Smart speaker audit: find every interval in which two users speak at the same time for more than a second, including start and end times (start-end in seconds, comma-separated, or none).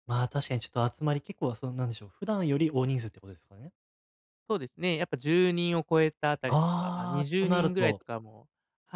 6.5-8.0